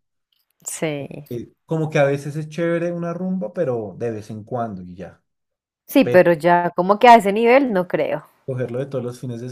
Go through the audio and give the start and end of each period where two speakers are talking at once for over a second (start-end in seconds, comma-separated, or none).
none